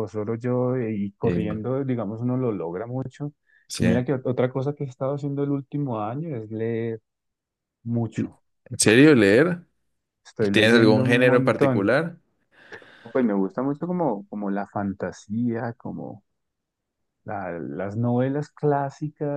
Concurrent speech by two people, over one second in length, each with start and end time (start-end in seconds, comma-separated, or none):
10.5-11.9